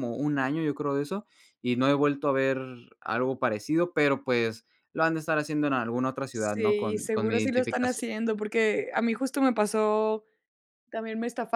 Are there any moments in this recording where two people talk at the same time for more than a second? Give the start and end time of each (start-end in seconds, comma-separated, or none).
6.3-8.0